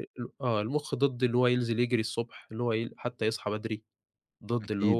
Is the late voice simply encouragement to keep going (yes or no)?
yes